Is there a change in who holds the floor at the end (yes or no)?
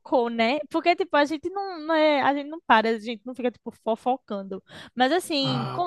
no